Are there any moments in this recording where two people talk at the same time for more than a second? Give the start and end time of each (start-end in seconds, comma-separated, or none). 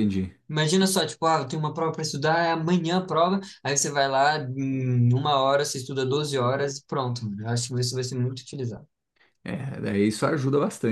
none